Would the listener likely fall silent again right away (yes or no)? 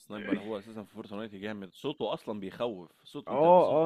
no